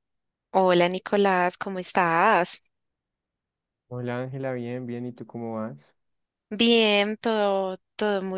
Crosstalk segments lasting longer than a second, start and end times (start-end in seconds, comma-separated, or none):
none